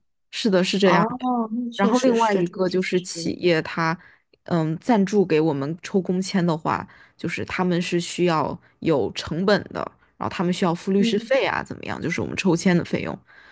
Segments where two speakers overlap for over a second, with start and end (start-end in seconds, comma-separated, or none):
1.8-3.3